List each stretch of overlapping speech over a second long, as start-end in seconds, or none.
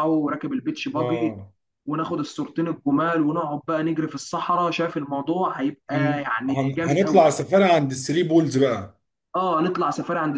5.9-7.3